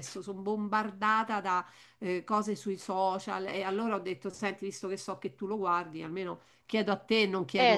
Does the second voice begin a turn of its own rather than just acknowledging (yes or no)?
yes